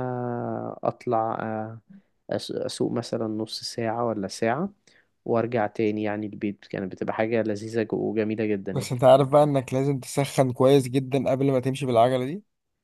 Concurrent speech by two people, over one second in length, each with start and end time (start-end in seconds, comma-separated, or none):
none